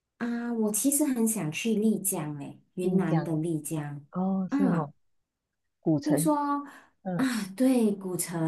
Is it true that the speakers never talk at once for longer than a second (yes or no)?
yes